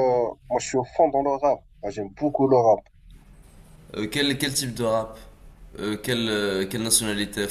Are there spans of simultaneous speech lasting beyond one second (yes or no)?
no